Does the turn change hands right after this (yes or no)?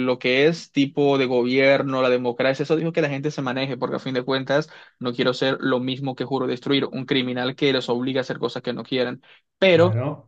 no